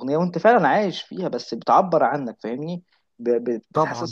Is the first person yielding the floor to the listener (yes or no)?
no